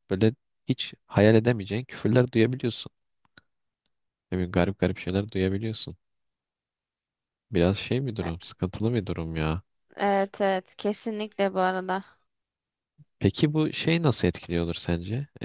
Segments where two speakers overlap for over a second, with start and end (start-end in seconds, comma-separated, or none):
none